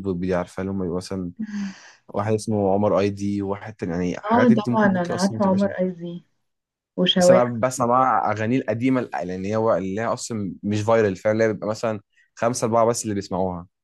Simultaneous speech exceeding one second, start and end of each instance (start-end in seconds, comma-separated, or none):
4.2-5.7